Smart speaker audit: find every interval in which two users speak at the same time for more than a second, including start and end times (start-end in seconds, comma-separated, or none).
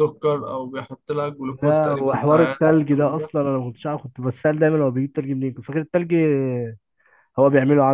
1.5-3.3